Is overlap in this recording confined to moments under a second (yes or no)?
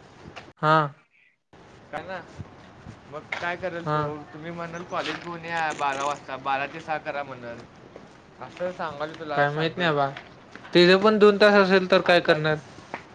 yes